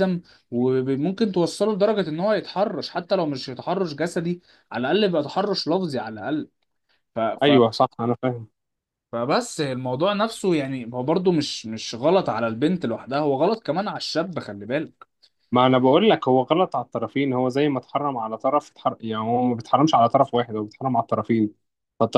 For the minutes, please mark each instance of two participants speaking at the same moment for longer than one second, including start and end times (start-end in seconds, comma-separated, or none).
none